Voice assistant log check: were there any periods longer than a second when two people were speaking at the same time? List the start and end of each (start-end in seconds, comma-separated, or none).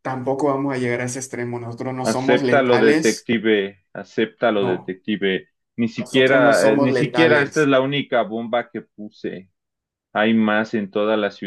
2.0-3.3, 6.0-7.7